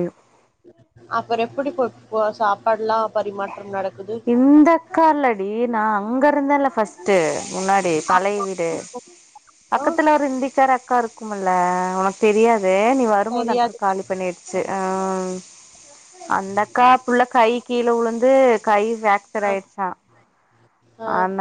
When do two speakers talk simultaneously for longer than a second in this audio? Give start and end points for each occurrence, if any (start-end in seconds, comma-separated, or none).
none